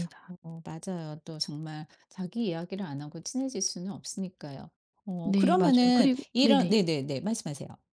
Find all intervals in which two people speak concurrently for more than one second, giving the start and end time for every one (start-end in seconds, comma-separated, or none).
5.2-6.7